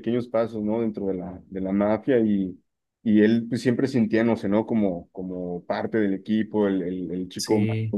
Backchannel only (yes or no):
yes